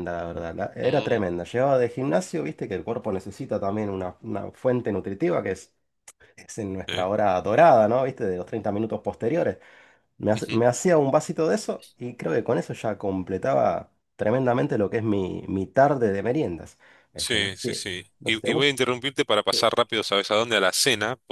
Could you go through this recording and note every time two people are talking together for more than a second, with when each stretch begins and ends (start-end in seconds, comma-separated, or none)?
17.1-18.8